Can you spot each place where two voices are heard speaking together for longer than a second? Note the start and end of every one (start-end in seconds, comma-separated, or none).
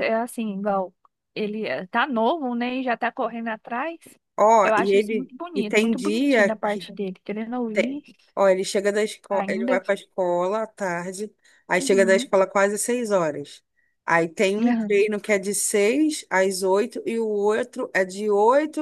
4.6-6.9